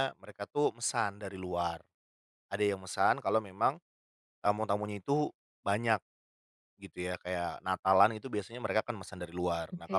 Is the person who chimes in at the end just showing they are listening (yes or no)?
yes